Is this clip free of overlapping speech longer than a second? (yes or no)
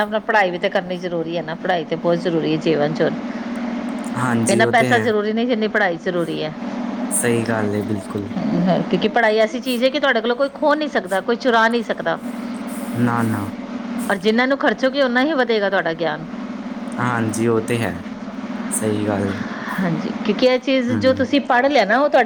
yes